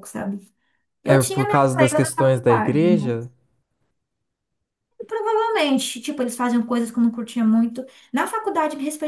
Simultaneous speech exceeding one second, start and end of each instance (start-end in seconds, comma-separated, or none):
1.0-3.2